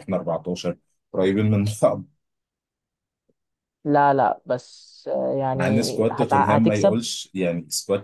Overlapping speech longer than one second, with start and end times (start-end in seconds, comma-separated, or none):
5.5-7.0